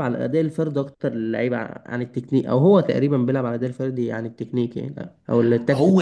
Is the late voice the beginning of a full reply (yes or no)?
yes